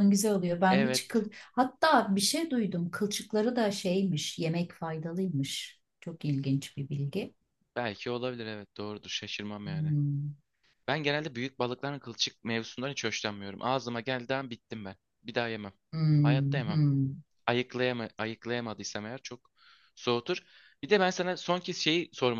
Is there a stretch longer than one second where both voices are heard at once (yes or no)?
no